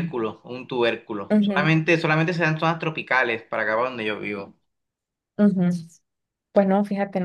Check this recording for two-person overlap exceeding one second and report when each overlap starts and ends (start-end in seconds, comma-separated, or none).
none